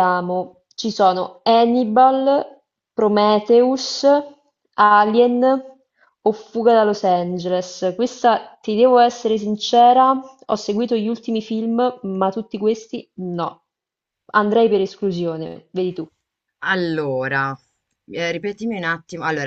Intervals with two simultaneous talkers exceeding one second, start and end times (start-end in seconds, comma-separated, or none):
none